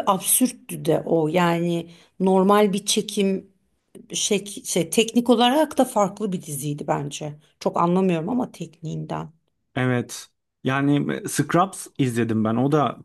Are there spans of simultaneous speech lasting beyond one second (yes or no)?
no